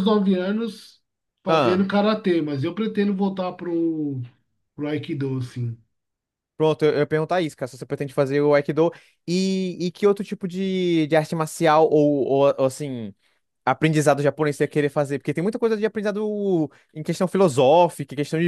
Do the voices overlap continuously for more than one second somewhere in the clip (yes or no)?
no